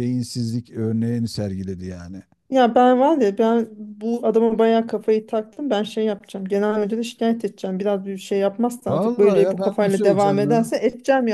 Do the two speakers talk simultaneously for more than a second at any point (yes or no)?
yes